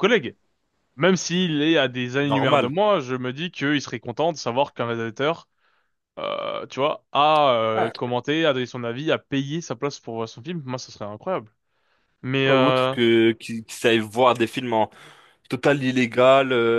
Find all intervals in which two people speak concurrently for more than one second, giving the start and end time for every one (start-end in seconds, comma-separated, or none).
none